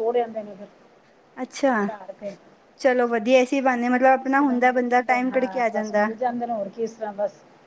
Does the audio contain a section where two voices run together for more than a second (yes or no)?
yes